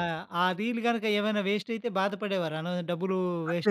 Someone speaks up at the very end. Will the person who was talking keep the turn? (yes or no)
no